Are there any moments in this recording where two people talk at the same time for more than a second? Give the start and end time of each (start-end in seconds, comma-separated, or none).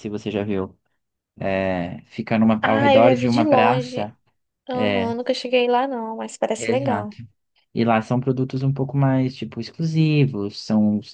2.6-4.1